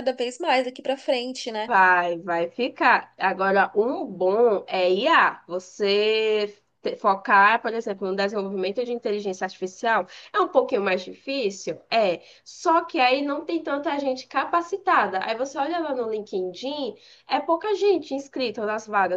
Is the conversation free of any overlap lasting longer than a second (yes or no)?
yes